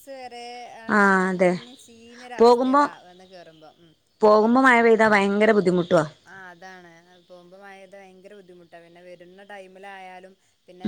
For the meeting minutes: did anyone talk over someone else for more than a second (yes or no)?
no